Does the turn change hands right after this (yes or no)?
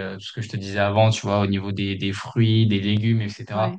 no